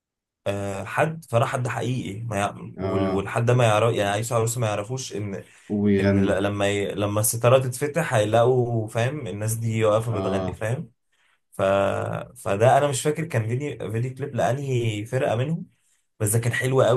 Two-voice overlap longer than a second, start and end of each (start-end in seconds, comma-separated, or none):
none